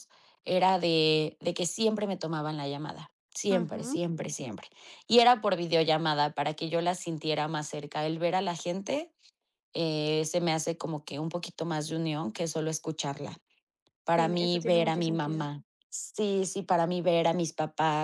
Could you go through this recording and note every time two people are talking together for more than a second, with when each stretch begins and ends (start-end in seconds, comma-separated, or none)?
14.1-15.5